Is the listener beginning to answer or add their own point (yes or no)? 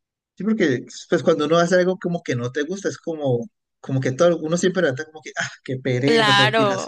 yes